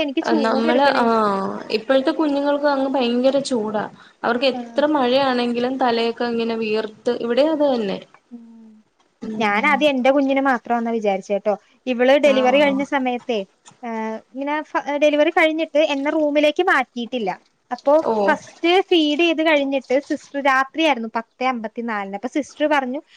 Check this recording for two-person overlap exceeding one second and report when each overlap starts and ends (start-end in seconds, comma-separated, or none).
none